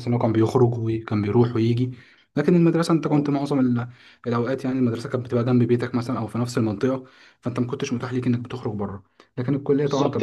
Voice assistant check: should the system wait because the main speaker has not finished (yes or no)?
no